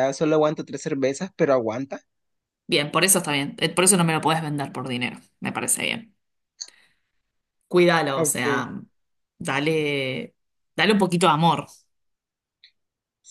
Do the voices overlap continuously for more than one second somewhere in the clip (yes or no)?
no